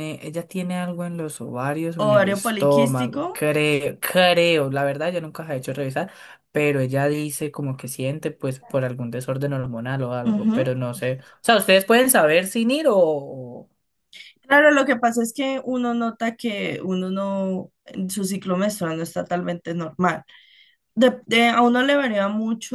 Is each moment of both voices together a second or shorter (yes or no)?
no